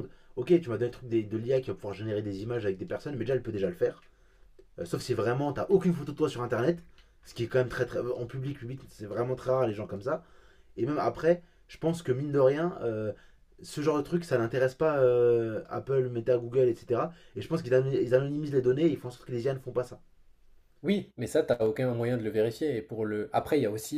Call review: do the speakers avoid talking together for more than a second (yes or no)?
yes